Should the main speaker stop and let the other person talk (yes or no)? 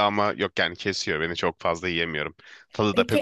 yes